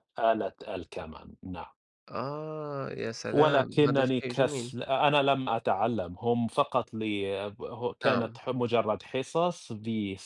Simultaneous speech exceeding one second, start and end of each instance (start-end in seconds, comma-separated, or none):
3.3-4.7